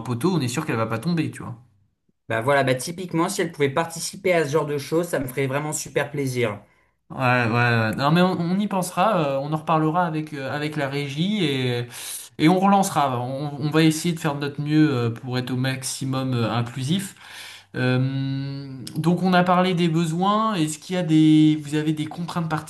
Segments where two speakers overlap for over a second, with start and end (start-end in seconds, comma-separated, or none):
none